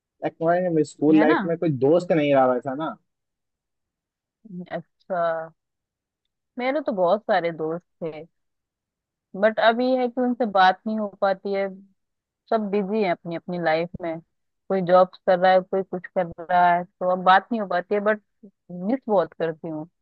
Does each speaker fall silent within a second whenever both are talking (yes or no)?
yes